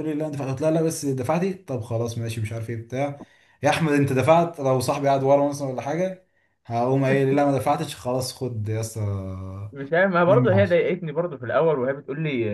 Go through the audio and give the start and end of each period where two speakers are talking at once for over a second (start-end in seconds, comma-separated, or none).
none